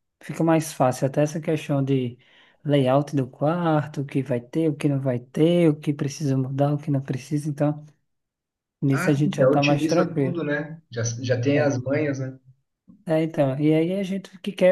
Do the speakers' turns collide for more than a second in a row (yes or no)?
yes